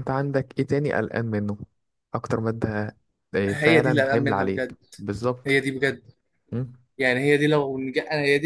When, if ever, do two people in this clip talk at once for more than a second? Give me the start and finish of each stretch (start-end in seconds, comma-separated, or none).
3.5-4.8